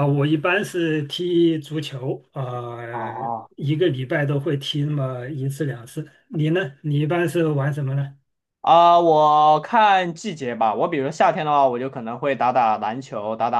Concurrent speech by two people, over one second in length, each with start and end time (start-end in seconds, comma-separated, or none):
none